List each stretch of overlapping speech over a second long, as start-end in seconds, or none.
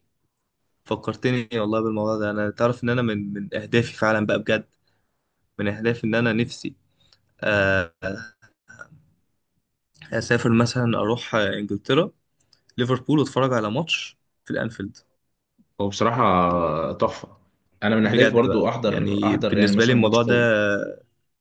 18.0-20.4